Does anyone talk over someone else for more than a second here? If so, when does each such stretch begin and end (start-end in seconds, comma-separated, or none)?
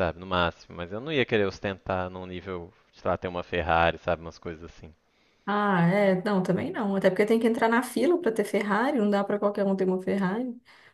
none